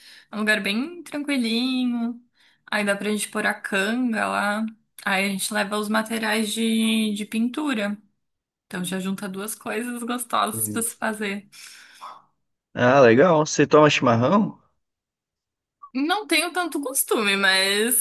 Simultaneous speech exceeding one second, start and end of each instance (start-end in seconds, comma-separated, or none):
none